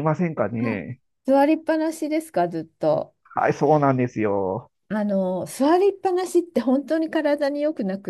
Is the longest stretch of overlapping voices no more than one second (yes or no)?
yes